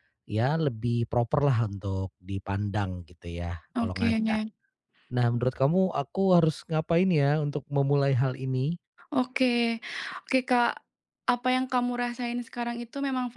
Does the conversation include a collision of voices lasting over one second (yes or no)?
no